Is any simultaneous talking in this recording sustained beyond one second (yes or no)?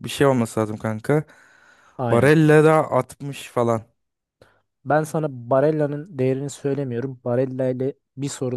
no